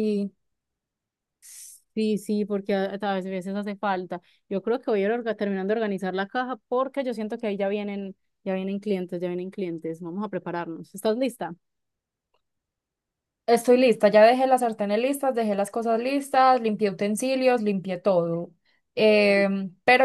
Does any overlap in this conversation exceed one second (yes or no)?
no